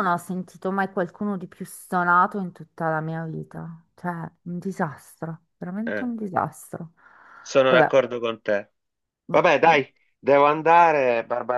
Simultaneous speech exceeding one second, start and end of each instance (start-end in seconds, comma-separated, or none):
none